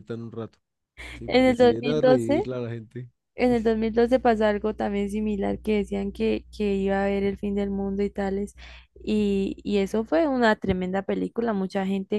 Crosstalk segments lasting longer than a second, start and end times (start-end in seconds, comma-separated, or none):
1.3-2.5